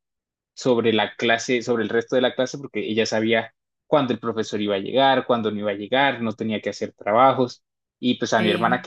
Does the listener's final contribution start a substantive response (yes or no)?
no